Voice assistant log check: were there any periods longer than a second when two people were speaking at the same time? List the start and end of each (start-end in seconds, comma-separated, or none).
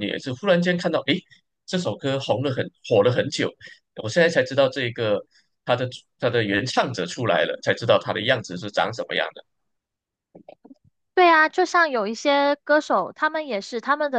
none